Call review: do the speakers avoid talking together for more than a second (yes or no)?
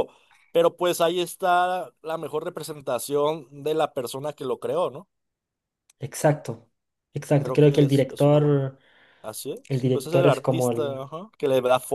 no